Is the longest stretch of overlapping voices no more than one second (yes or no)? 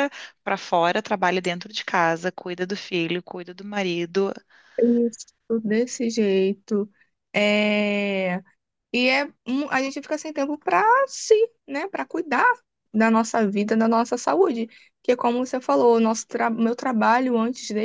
yes